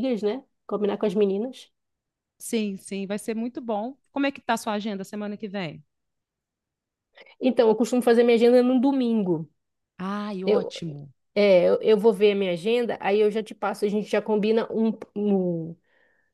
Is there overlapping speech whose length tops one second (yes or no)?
no